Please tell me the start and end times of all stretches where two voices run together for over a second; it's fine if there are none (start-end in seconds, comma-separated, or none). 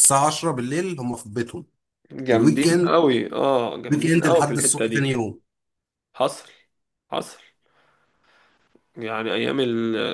3.9-5.1